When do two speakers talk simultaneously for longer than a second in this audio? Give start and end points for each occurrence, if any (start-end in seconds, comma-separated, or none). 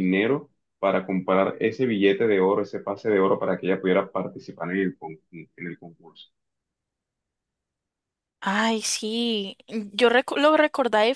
none